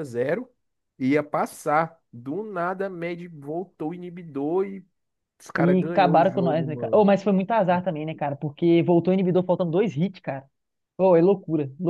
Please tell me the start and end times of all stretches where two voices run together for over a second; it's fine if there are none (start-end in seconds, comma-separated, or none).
5.6-7.0